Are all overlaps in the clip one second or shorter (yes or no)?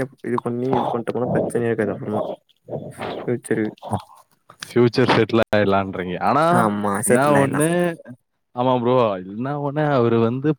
yes